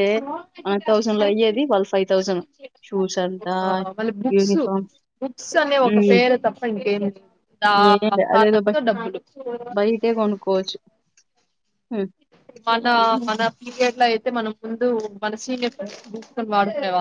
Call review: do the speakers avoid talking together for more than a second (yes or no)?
yes